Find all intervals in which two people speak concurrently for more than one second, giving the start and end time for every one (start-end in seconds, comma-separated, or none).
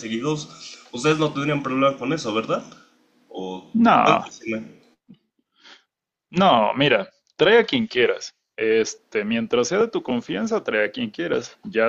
none